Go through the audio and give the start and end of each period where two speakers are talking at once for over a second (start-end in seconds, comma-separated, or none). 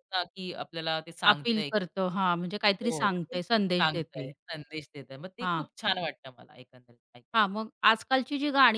2.8-4.3